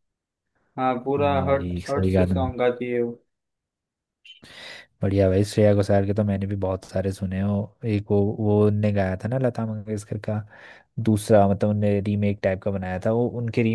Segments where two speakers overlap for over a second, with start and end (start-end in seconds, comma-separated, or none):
1.2-2.5